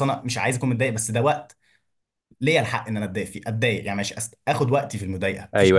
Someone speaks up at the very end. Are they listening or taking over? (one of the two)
taking over